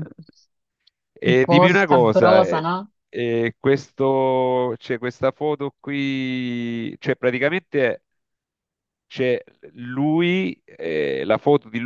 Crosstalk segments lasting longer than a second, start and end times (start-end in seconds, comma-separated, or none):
1.3-2.7